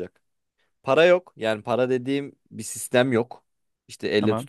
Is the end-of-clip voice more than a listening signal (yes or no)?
no